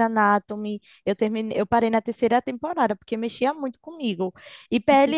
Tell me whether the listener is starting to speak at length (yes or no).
no